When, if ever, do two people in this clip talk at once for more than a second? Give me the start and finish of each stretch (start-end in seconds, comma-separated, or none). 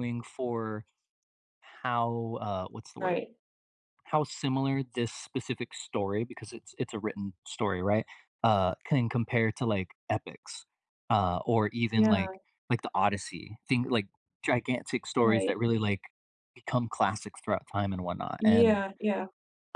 none